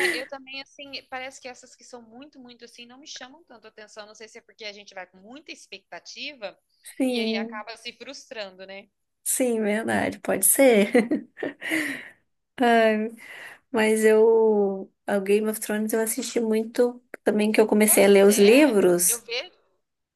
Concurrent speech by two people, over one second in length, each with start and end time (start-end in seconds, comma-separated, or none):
17.9-19.3